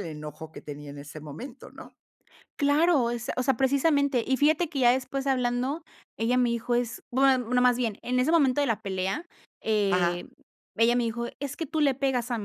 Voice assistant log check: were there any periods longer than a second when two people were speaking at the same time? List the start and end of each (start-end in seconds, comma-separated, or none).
none